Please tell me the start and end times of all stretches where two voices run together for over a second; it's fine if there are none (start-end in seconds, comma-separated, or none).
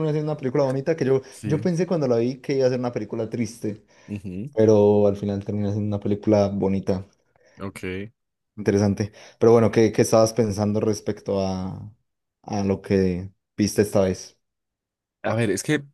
none